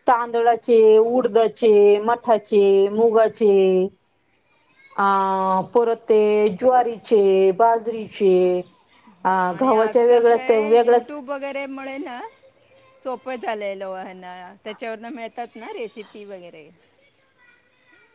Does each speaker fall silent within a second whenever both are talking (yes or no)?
no